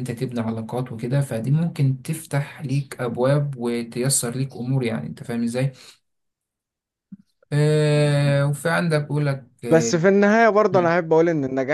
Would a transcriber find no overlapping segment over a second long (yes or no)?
yes